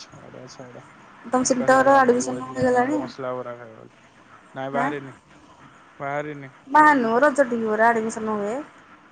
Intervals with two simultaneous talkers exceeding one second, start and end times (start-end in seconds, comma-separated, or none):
1.5-3.0